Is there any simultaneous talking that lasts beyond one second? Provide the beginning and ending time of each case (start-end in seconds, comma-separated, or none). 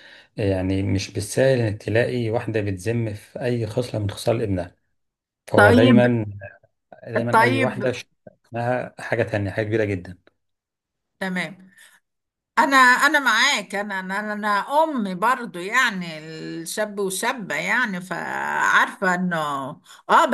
none